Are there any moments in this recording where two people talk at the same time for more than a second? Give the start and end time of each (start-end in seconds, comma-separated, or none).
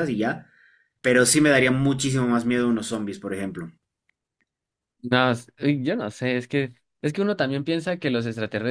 none